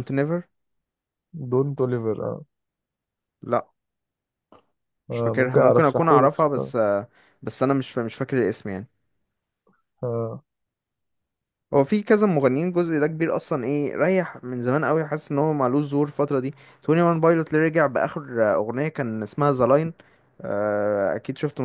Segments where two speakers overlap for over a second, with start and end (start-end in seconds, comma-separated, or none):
5.1-6.7